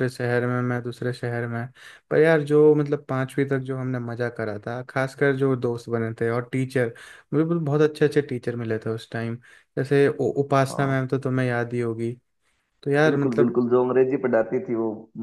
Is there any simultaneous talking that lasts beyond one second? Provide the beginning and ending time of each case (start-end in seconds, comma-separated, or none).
none